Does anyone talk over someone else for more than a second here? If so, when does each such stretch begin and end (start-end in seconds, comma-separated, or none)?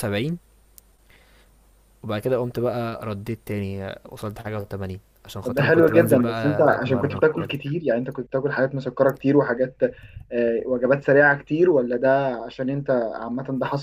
5.4-7.5